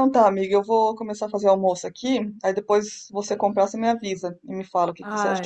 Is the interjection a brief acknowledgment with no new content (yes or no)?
no